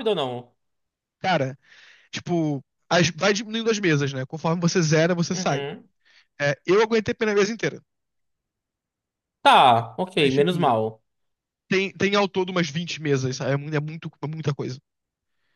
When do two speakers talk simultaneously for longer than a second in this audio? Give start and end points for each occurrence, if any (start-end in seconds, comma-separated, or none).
none